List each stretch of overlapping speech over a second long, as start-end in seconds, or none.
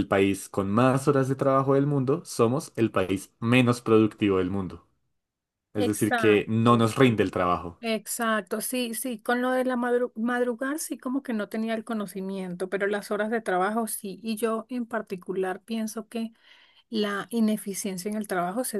5.8-7.2